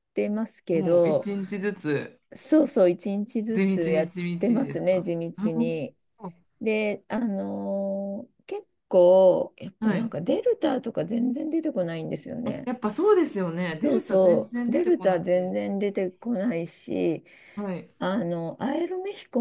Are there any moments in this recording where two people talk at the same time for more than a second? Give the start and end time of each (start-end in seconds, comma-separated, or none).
3.5-5.9, 13.8-15.5